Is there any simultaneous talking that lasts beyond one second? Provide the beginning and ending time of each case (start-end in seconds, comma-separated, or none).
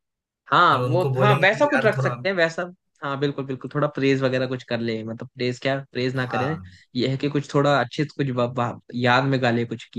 0.7-2.1